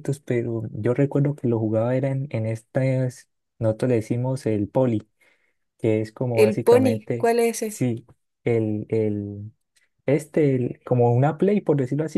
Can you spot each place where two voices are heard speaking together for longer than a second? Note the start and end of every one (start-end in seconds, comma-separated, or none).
6.3-7.8